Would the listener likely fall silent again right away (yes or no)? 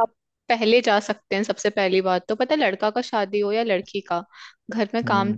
yes